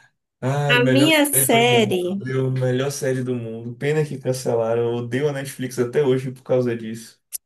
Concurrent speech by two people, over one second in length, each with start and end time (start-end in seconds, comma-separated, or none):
0.7-2.2